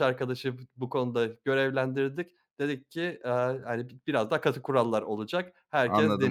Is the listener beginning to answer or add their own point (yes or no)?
yes